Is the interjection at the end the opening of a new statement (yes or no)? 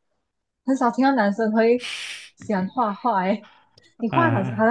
no